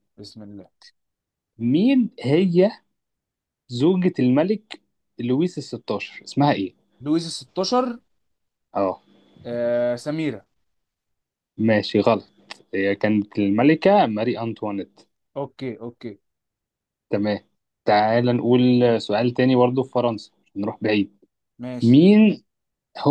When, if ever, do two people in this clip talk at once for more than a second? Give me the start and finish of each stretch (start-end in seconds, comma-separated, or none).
none